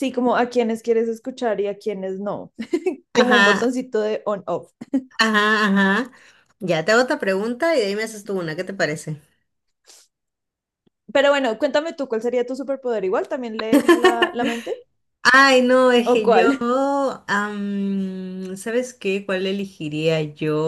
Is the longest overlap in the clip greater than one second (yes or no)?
no